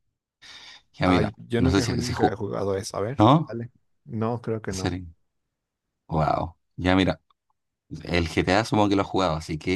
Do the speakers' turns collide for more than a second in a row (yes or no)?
yes